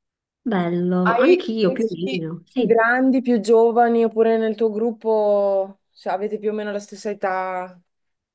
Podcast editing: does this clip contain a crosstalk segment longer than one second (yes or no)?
yes